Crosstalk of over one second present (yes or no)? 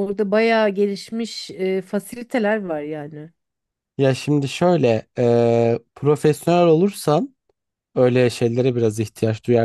no